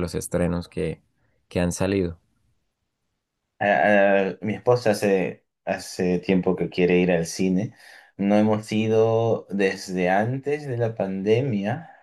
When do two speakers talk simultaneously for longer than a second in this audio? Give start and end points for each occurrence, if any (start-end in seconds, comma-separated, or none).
none